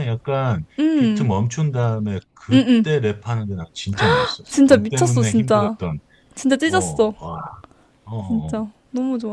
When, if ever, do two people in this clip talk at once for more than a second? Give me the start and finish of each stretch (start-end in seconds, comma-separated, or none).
4.5-5.8